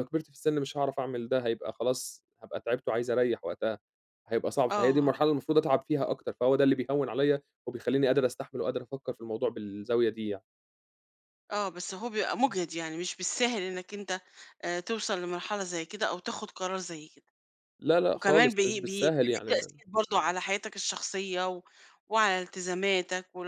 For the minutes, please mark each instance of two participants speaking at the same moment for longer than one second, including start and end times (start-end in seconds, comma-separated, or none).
18.1-19.8